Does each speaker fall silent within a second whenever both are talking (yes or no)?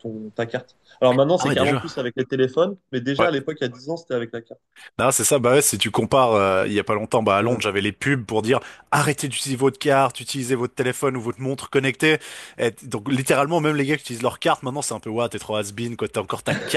yes